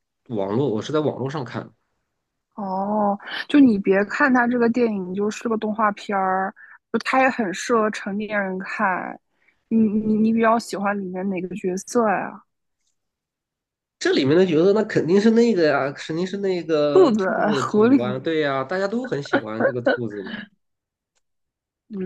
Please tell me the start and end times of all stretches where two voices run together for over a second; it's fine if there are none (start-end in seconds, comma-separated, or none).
16.9-18.2